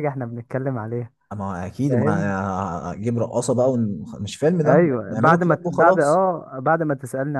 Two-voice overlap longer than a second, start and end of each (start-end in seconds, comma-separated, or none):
4.7-6.2